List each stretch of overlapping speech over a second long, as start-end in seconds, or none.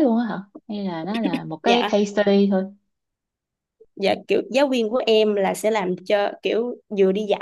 none